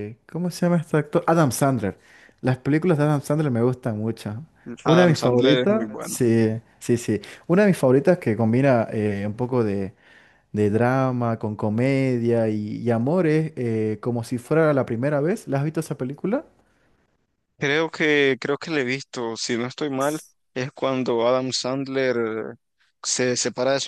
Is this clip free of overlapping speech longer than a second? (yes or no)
no